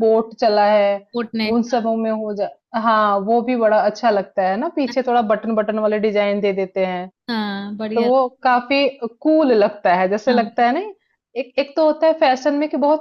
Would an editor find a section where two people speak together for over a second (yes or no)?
no